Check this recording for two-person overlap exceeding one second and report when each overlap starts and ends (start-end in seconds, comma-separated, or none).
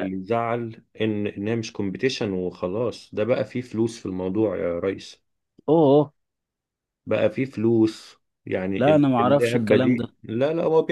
8.8-10.1